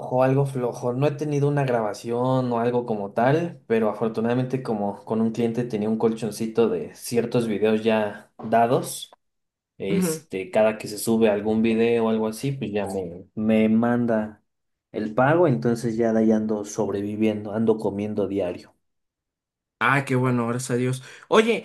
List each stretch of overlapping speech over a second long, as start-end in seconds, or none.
none